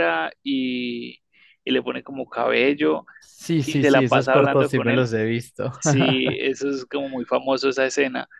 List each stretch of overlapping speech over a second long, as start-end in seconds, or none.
3.6-5.1